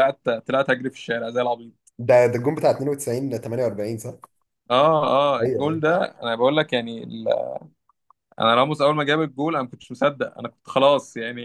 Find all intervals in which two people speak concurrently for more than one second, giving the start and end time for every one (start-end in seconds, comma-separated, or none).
none